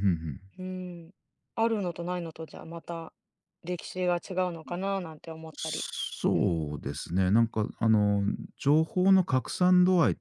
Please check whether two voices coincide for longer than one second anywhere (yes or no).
no